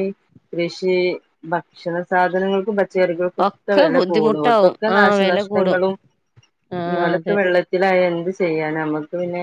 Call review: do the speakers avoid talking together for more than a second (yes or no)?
no